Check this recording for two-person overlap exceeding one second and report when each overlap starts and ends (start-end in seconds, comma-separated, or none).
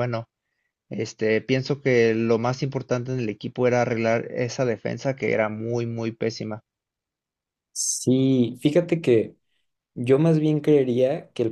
none